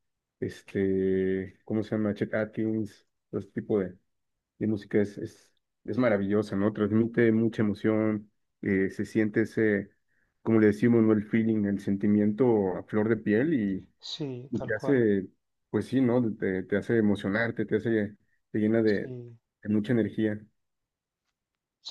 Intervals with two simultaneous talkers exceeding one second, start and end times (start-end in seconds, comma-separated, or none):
none